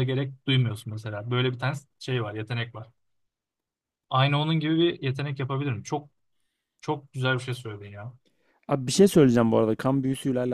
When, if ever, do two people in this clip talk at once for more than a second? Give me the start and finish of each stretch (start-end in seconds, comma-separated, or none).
none